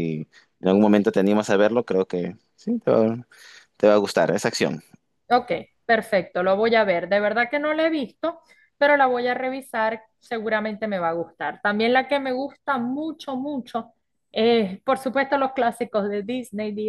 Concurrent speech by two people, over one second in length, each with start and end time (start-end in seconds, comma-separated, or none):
none